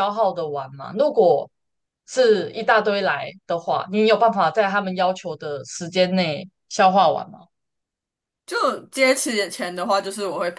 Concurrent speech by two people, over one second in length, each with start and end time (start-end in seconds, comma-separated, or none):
none